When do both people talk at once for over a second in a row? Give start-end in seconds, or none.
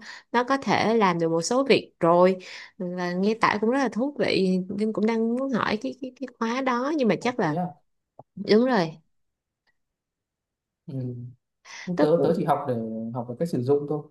none